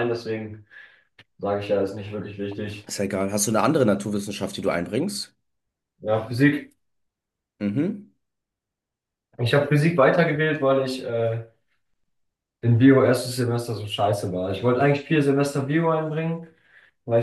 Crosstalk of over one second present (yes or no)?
no